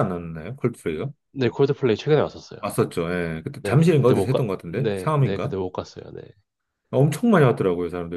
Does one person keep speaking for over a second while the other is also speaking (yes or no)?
yes